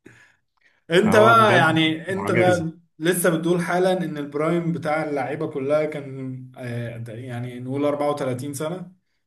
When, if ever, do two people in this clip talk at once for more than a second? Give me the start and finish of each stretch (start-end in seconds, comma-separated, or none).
1.0-2.7